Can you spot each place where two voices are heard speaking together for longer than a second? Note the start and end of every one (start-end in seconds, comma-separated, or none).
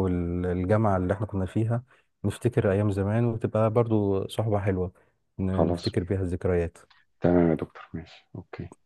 none